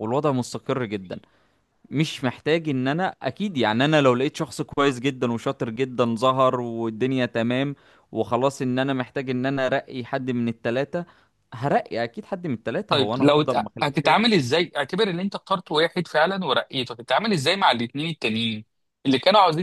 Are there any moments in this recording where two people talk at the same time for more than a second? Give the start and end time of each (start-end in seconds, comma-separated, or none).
12.9-14.2